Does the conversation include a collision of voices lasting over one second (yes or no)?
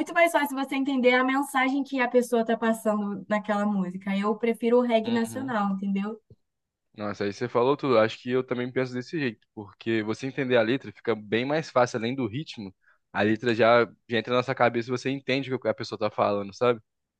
no